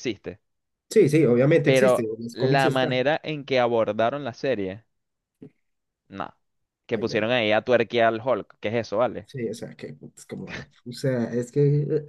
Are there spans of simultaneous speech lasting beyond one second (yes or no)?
yes